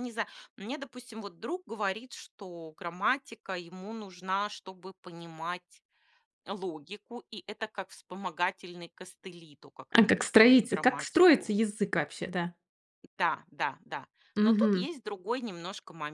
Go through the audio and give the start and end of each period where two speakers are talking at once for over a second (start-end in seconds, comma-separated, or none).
9.9-11.5